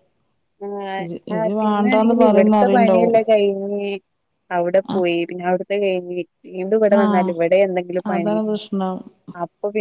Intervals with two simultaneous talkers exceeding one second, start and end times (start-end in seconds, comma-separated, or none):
1.0-3.2